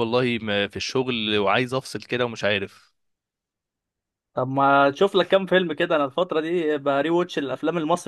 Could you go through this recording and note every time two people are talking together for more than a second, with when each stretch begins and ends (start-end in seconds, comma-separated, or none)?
none